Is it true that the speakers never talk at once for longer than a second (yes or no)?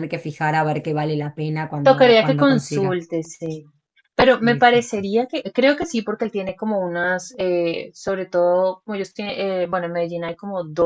no